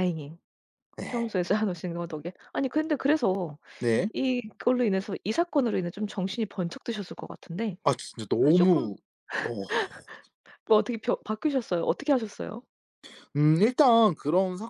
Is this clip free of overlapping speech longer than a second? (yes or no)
yes